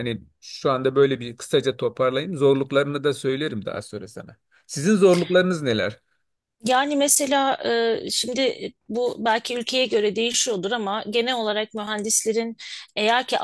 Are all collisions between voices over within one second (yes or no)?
yes